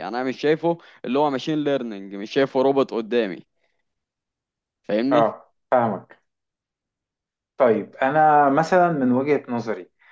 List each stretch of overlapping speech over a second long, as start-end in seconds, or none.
none